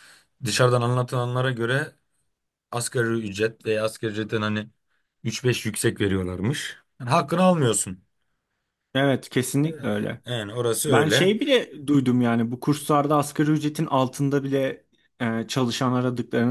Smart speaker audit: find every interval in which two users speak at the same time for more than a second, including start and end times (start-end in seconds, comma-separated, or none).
none